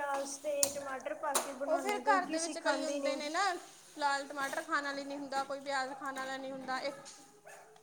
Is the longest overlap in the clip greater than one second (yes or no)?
yes